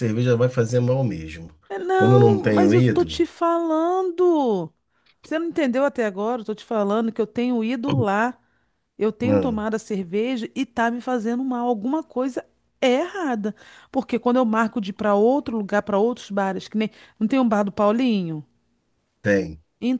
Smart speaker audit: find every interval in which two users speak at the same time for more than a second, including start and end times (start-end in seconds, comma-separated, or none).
1.9-3.2